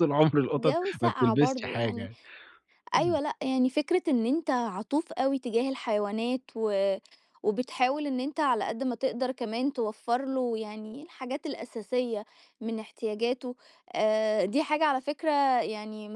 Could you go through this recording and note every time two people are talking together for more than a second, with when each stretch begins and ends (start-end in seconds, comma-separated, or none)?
0.6-2.1